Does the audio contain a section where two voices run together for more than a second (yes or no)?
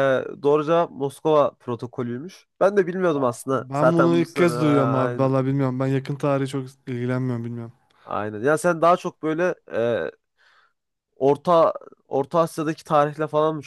yes